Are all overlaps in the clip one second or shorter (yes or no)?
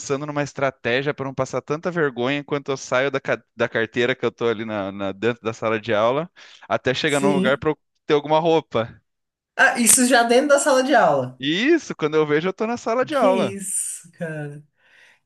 yes